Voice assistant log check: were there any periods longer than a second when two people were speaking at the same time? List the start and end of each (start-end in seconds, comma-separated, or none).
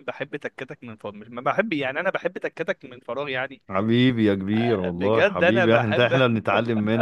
5.0-6.2